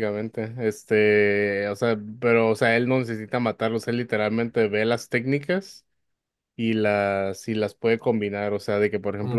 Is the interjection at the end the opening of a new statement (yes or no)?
no